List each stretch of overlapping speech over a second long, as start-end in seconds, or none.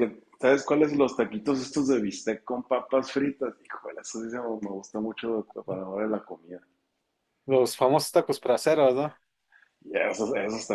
none